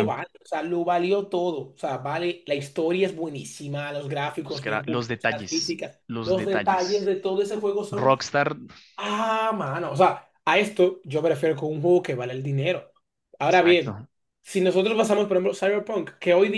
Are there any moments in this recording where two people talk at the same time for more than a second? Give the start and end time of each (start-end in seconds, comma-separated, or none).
4.5-7.1